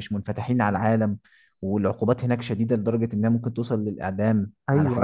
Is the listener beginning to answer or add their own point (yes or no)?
yes